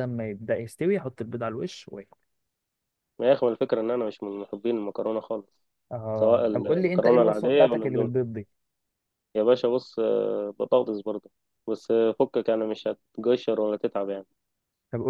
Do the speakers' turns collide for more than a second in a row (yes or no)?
yes